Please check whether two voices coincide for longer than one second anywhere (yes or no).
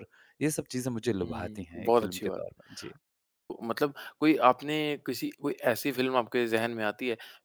yes